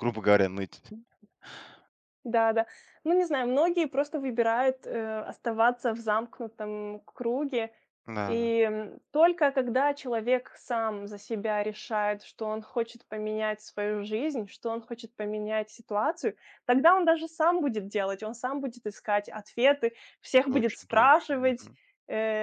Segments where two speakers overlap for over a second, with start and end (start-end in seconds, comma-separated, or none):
20.4-21.7